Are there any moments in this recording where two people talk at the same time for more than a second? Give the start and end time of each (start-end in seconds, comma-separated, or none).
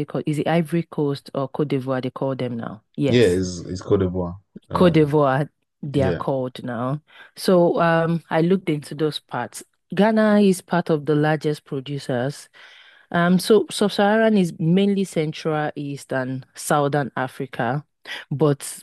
none